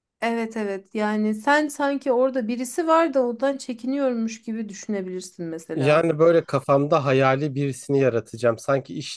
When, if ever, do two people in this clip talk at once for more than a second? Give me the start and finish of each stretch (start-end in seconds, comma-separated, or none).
none